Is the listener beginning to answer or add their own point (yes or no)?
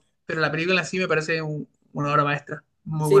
yes